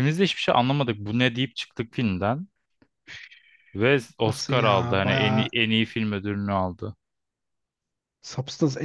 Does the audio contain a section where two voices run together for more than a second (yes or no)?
yes